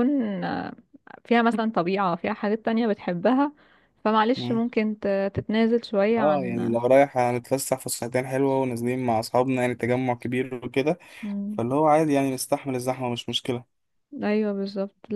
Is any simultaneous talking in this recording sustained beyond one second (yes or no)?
no